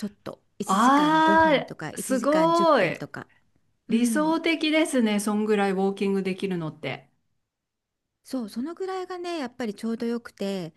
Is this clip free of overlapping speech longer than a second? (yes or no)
no